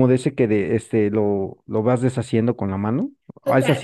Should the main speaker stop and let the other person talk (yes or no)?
yes